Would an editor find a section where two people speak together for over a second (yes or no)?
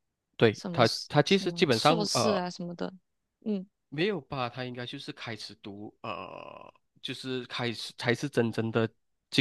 yes